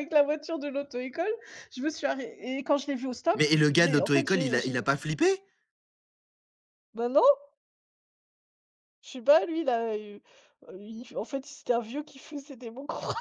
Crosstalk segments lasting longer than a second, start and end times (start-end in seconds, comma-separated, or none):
3.3-4.7